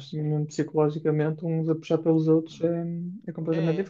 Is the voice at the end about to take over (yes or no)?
yes